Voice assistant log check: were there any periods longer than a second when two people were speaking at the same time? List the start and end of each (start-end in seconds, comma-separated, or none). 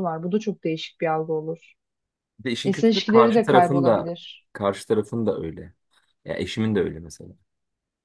2.6-4.1